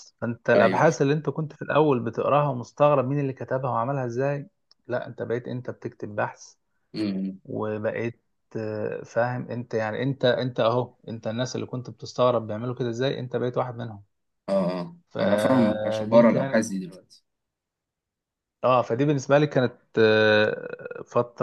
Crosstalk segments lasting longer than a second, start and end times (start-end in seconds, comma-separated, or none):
15.1-16.6